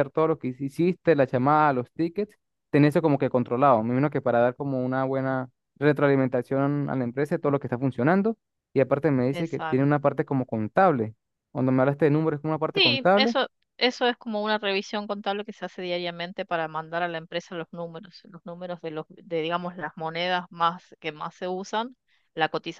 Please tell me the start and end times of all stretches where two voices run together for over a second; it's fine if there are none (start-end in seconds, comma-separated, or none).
none